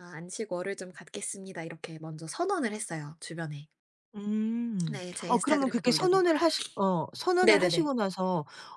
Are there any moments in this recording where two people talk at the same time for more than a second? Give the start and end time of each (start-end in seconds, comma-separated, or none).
4.9-6.2